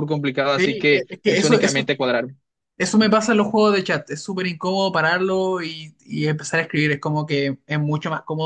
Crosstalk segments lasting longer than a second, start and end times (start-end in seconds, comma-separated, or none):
0.6-1.9